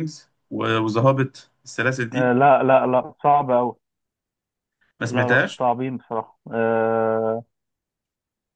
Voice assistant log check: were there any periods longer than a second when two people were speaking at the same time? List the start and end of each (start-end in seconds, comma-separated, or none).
none